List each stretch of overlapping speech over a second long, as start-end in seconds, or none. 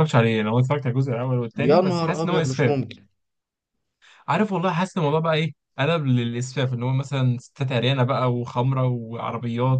1.6-2.8